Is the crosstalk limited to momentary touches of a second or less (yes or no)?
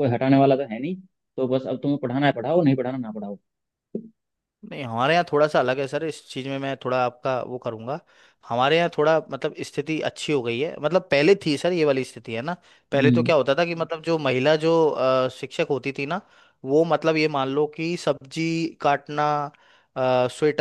yes